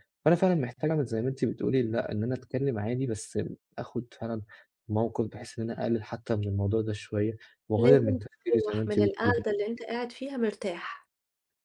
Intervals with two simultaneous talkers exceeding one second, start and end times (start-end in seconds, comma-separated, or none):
7.8-9.4